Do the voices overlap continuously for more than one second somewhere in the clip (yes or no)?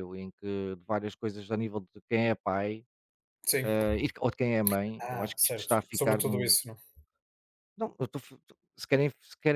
yes